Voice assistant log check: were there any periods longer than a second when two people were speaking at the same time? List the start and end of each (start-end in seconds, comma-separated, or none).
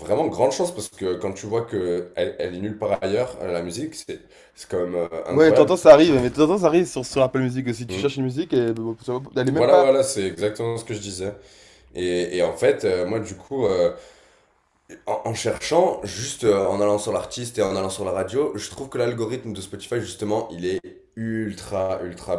none